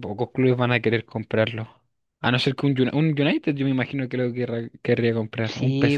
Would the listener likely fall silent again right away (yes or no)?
no